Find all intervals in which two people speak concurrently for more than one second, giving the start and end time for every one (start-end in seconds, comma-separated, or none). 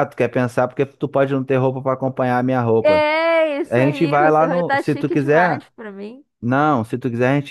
3.7-5.7